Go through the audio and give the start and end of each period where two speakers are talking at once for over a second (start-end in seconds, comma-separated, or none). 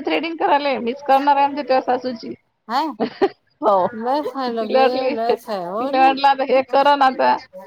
4.5-6.9